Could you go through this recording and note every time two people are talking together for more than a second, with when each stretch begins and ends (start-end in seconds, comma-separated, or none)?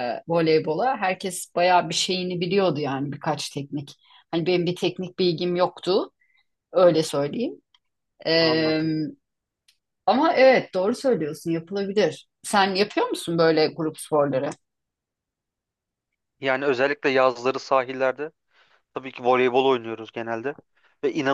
none